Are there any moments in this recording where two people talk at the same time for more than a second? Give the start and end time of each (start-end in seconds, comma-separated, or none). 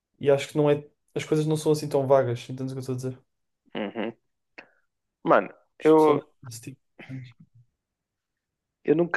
none